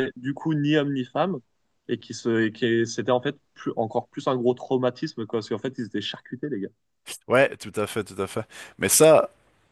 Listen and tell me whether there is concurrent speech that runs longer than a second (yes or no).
no